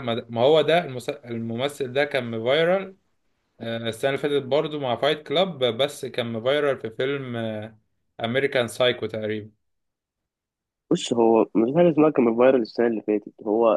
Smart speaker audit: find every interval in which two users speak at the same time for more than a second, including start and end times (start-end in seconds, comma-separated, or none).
none